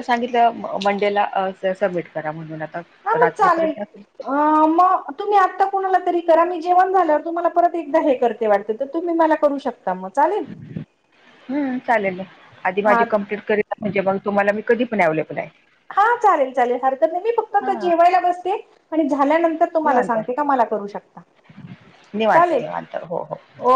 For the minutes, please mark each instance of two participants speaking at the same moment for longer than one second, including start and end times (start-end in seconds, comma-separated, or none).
none